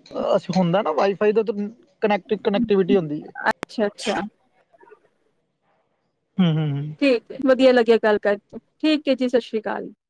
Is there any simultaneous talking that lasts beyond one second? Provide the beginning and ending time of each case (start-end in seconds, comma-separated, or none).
none